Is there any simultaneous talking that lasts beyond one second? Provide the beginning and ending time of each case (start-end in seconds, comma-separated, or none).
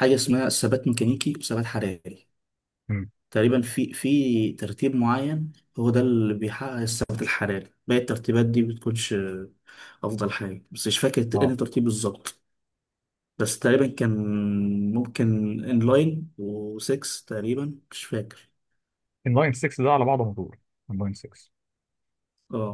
none